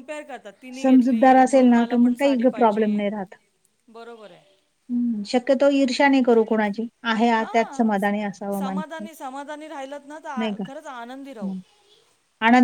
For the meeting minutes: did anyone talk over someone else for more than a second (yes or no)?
yes